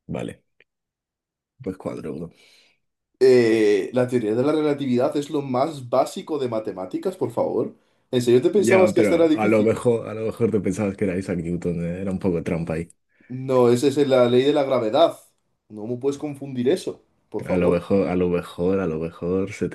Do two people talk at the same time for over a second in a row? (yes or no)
yes